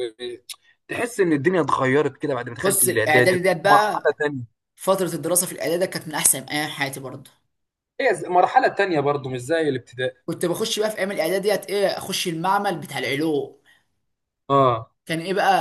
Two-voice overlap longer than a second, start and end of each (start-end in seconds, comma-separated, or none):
2.6-4.1